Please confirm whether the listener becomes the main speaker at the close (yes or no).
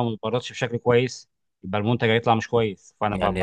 yes